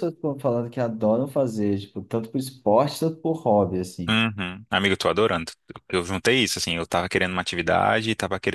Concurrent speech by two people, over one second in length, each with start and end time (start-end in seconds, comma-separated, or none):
none